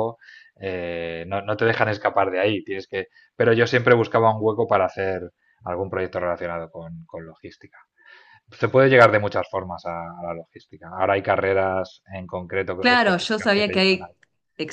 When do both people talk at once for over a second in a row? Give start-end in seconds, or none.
12.8-14.1